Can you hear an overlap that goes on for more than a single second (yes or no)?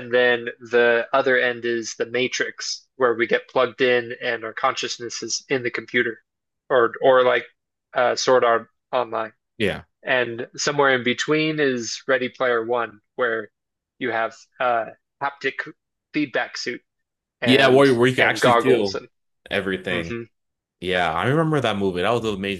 yes